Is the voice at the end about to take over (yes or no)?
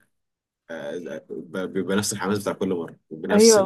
yes